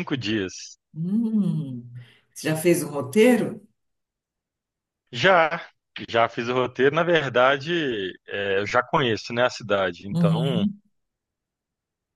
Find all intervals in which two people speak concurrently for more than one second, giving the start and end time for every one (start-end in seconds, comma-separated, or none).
none